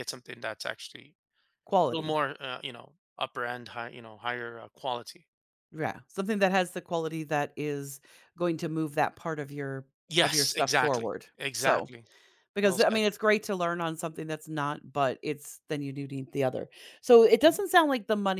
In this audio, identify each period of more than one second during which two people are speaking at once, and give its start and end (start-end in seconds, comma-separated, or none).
10.2-11.9